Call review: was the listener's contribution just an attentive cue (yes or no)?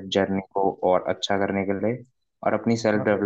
yes